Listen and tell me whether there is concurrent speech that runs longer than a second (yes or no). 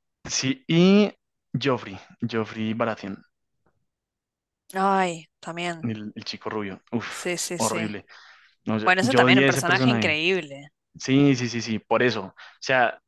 yes